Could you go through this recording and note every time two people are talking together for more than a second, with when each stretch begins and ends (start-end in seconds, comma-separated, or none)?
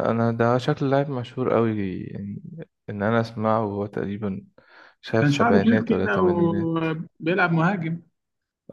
5.2-6.7